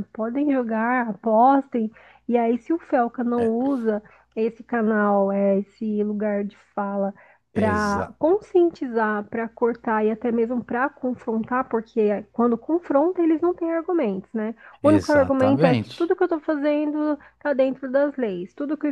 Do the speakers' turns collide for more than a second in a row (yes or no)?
yes